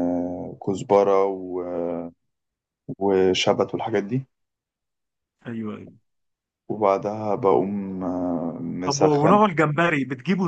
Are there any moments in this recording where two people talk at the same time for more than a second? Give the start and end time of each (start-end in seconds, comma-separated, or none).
none